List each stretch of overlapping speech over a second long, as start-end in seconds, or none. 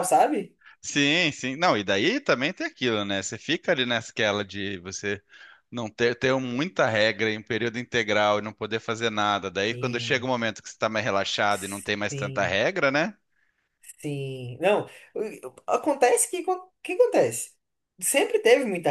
none